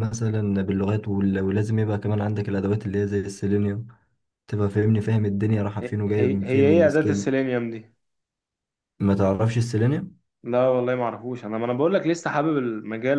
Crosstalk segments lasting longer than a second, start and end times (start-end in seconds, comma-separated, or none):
5.8-7.3